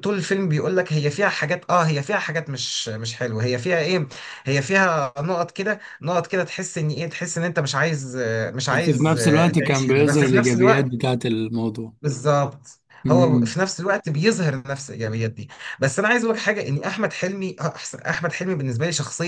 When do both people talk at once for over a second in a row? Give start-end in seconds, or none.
8.7-10.9